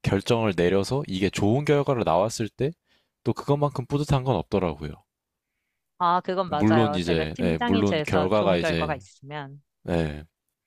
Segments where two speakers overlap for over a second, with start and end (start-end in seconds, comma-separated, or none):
6.5-9.0